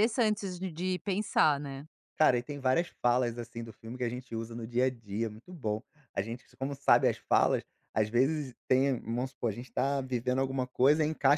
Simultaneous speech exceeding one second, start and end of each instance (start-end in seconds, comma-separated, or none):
none